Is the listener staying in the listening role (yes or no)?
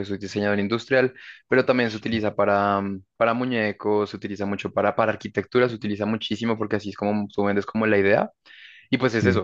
yes